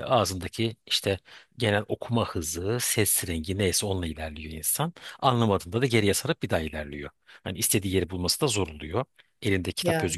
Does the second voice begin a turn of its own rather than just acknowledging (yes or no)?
no